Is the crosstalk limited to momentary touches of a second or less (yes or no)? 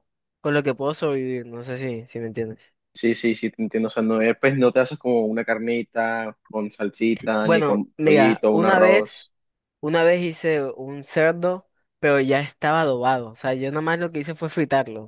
no